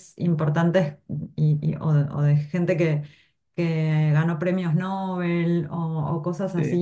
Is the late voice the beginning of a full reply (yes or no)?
no